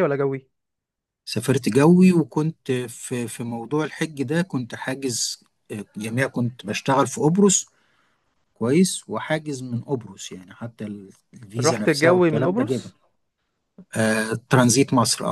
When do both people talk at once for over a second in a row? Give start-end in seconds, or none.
11.6-12.9